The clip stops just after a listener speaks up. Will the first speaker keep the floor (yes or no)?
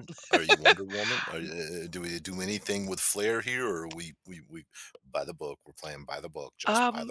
no